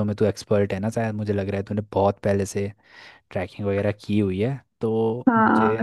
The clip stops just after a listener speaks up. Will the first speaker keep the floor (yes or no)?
no